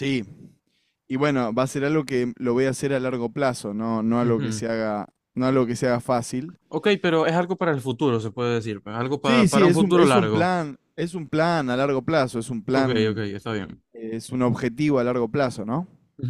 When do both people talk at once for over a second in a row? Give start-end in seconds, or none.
9.2-10.5